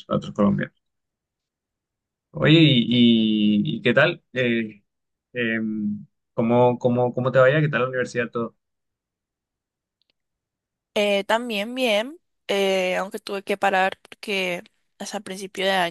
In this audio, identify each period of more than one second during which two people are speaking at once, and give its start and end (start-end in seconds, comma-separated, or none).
none